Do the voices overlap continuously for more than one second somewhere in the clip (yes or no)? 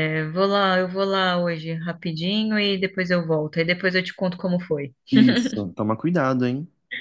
no